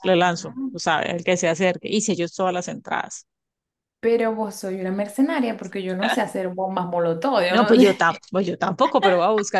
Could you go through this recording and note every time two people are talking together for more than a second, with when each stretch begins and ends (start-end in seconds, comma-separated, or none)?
none